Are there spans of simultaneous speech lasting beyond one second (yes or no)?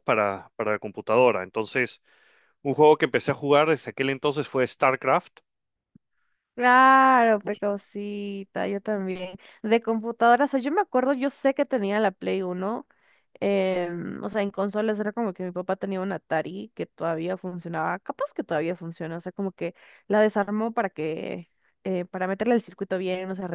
no